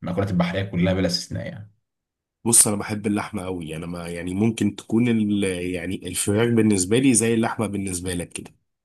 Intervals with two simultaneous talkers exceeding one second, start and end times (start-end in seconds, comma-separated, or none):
none